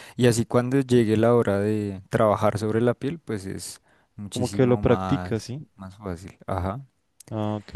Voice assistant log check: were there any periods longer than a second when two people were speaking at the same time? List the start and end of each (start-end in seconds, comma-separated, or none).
4.3-5.7